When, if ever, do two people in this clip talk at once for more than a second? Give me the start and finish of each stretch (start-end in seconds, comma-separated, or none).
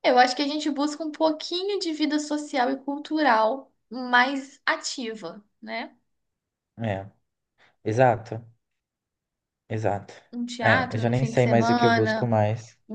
10.6-12.3